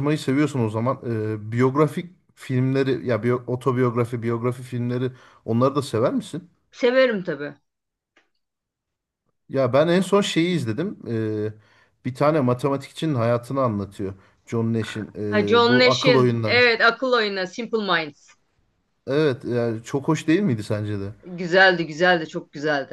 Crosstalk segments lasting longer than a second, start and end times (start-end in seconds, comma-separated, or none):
15.3-16.6